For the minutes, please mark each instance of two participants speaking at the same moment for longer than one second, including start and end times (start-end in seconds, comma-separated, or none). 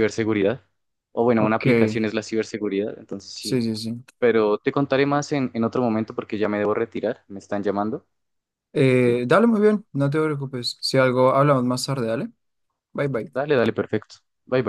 none